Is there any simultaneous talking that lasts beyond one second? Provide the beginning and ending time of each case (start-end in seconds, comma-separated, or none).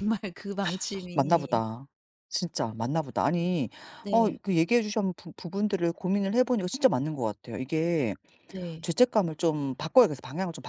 none